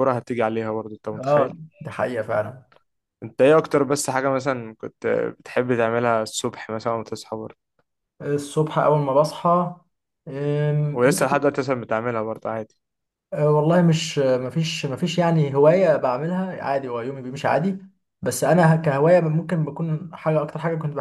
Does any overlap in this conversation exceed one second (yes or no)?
no